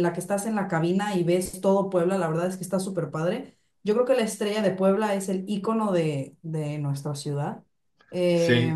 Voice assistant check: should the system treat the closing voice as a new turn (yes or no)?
no